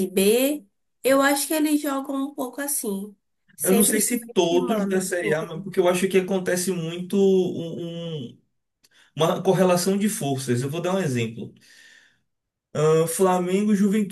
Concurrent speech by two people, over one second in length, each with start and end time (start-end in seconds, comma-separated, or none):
3.6-5.6